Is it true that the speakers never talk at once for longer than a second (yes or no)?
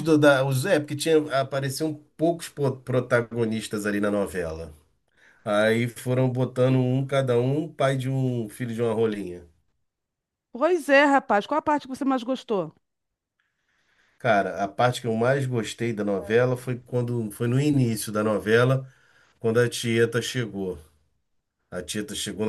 yes